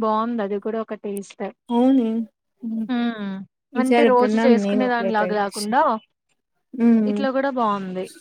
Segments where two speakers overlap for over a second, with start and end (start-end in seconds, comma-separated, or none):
3.8-5.7